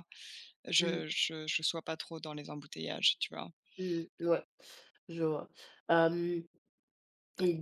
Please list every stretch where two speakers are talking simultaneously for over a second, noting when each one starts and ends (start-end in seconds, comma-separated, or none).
none